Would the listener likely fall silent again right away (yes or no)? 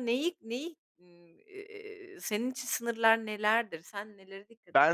no